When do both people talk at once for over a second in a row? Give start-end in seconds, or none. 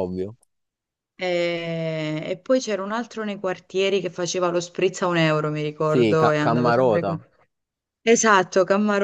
5.9-7.2